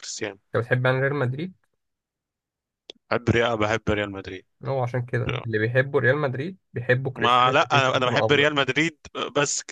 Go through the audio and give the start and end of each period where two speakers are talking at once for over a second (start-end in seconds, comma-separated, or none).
7.2-8.4